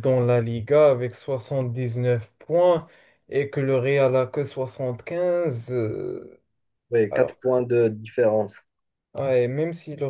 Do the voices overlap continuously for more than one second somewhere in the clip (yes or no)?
no